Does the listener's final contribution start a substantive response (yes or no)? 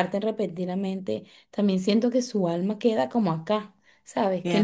yes